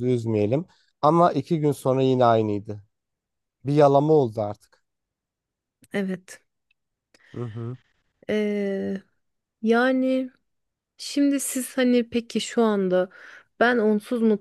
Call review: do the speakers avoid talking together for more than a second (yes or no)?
yes